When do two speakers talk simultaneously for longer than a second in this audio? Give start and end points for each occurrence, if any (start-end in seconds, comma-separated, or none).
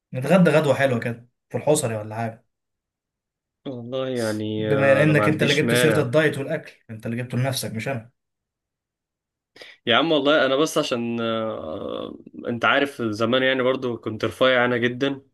4.6-6.2